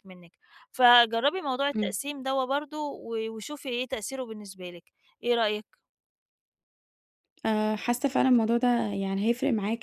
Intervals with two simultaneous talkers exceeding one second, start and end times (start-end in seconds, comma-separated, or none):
none